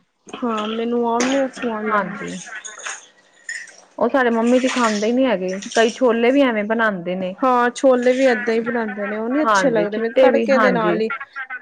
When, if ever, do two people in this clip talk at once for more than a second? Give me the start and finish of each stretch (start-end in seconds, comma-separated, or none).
9.4-11.0